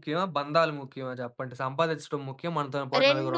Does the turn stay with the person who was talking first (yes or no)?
no